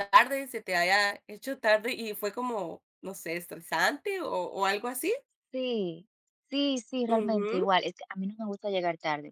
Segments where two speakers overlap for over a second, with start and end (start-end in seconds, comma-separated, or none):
none